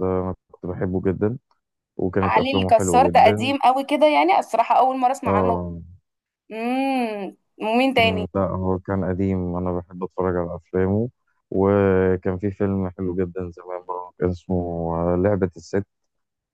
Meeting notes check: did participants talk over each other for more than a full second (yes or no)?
yes